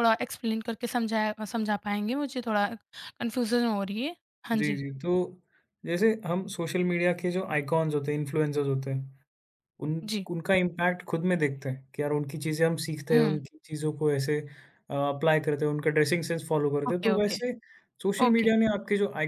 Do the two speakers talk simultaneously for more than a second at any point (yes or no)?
no